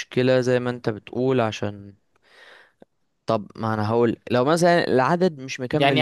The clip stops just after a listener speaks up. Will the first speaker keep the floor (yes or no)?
no